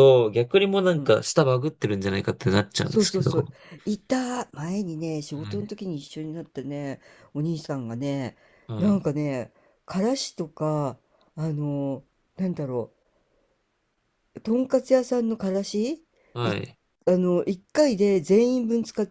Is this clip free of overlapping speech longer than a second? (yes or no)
yes